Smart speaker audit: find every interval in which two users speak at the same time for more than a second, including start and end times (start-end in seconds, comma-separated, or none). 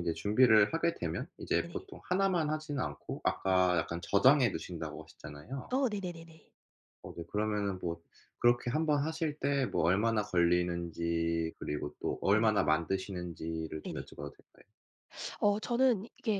none